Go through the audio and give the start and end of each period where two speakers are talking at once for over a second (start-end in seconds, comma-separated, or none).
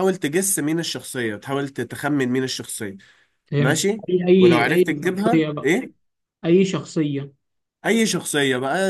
3.6-5.7